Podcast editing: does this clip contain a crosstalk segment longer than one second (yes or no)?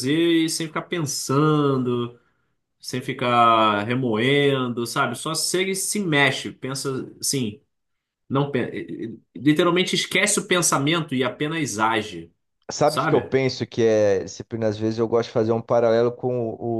no